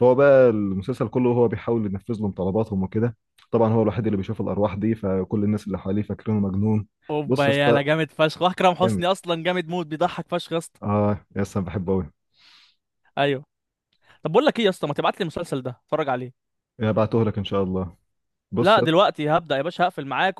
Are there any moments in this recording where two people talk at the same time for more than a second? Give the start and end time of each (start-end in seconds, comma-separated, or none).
none